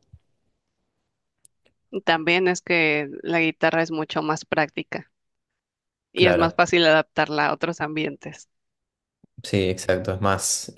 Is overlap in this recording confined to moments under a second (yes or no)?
yes